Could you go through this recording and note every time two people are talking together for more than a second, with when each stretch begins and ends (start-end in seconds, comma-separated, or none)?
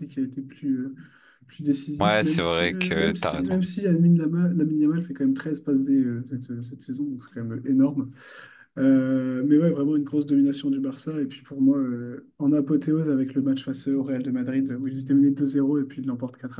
2.0-3.6